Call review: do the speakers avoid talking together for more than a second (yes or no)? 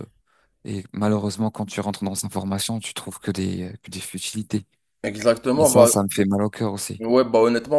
yes